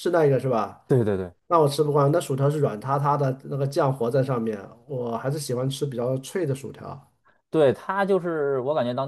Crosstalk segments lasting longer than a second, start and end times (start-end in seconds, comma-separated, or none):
none